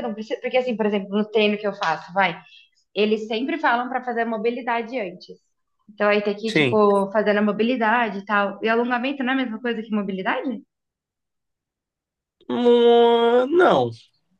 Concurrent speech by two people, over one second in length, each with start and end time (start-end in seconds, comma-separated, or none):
none